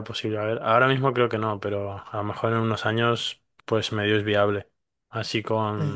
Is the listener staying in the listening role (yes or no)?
yes